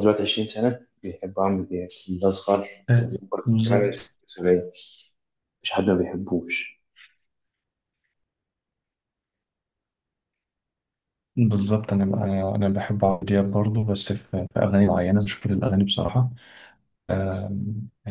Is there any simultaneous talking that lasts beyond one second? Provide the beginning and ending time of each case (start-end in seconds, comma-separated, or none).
none